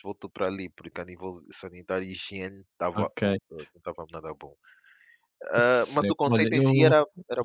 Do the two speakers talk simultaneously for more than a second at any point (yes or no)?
yes